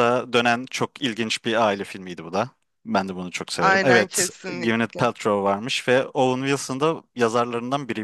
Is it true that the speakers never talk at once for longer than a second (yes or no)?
no